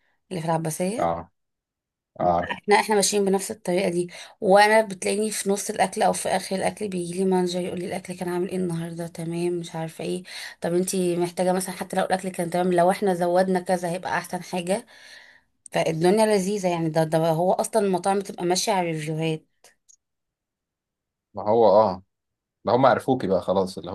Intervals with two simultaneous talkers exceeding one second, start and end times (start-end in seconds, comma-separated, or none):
none